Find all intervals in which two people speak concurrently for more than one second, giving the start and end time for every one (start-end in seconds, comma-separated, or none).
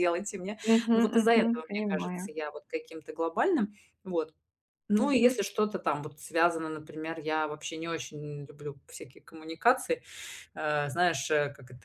0.7-2.4